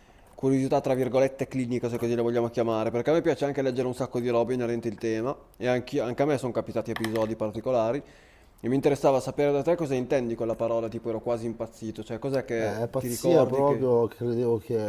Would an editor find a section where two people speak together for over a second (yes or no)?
yes